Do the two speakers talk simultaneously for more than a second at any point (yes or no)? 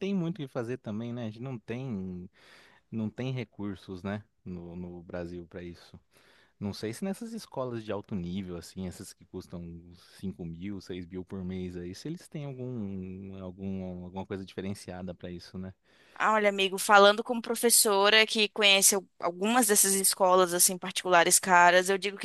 no